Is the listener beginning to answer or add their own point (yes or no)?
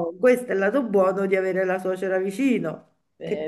no